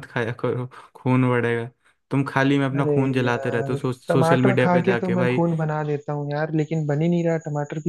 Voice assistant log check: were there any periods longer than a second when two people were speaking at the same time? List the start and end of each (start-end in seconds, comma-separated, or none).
2.8-5.4